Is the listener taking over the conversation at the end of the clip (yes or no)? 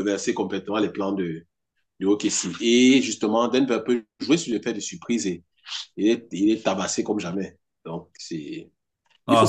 yes